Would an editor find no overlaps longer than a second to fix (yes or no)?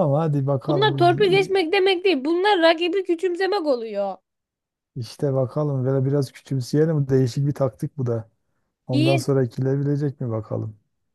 yes